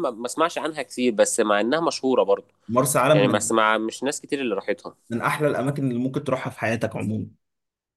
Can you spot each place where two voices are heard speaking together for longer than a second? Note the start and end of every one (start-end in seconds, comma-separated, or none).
none